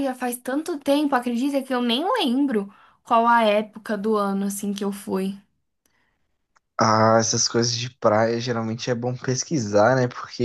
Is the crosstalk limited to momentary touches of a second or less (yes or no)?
yes